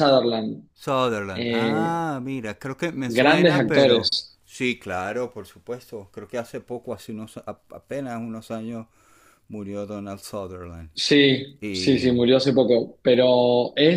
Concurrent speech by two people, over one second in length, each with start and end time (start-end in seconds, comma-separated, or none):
3.1-4.4